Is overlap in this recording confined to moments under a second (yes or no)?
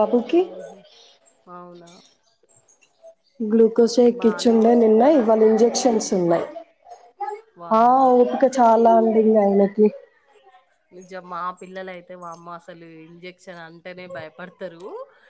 no